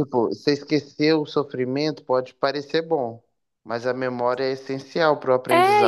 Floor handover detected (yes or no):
yes